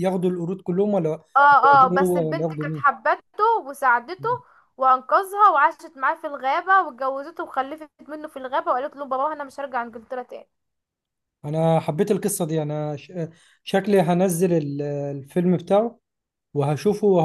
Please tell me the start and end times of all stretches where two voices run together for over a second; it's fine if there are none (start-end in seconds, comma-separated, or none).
1.6-2.8